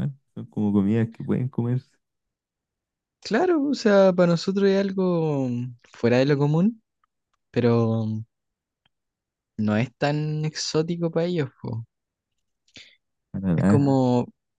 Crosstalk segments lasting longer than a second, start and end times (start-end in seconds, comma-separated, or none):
none